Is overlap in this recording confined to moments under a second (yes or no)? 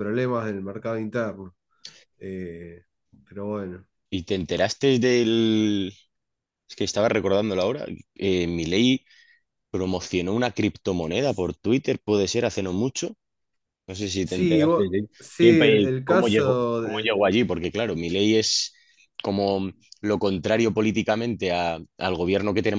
no